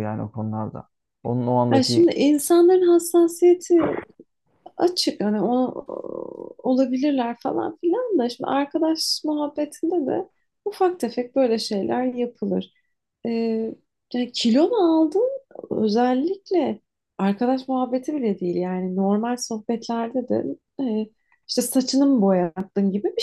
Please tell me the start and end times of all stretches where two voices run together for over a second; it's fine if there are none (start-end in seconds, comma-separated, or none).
none